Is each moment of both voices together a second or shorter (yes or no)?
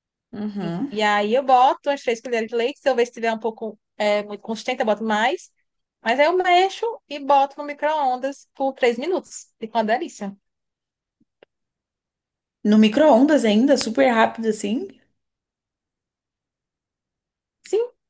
yes